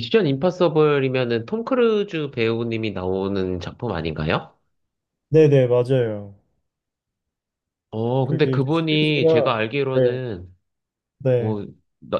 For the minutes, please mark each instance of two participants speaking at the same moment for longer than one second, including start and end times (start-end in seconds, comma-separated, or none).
8.2-10.2